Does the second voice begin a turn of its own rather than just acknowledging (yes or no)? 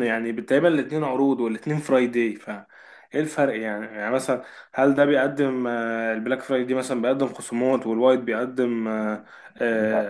no